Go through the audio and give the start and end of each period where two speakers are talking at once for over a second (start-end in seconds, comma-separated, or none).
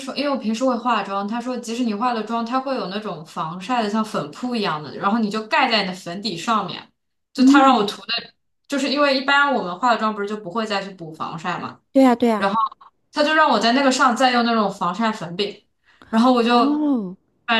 none